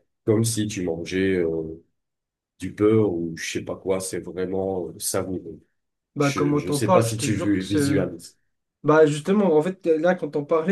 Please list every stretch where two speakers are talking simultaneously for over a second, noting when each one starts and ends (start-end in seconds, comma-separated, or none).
6.2-7.8